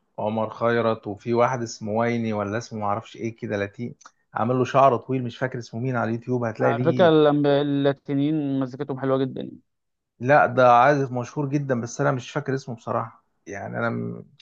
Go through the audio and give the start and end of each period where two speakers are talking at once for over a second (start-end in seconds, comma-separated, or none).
none